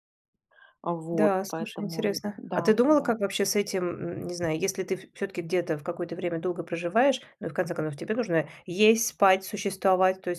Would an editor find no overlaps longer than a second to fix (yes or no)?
no